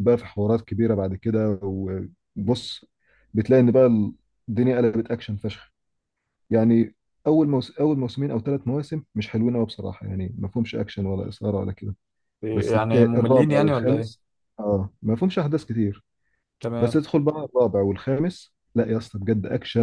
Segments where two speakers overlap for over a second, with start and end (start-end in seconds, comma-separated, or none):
12.5-14.1